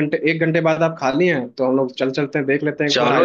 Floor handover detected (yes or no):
yes